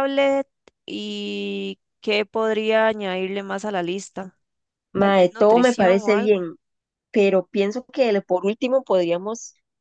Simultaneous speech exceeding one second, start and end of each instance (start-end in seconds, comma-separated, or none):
5.0-6.5